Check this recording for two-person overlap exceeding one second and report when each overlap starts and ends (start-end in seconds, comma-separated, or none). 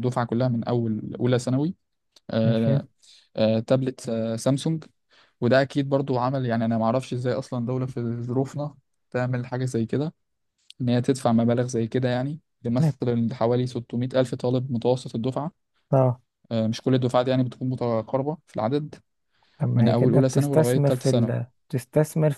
19.8-21.3